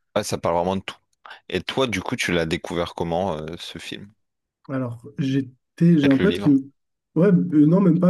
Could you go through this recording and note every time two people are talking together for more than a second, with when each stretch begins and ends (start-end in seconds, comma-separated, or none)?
none